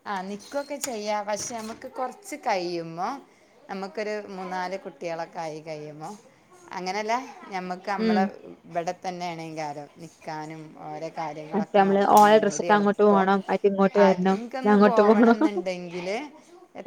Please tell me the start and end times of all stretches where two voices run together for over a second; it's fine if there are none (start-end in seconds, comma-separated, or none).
11.5-13.2